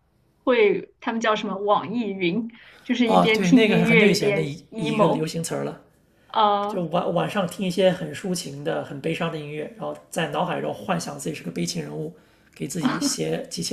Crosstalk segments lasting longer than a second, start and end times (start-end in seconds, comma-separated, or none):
3.0-5.3